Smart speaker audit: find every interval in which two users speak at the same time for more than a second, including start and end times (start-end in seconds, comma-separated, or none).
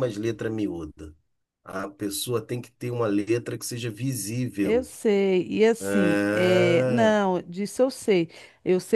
5.8-7.2